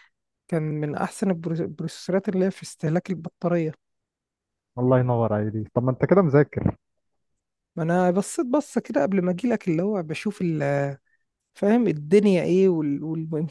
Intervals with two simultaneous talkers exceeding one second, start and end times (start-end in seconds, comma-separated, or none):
none